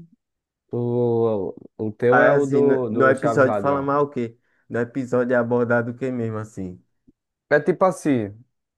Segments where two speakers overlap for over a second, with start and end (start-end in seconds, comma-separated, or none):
2.1-3.9